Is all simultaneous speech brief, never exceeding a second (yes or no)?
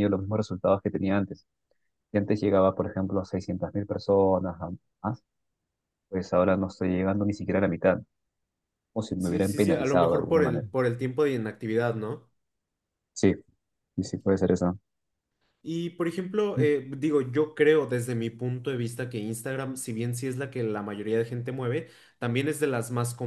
no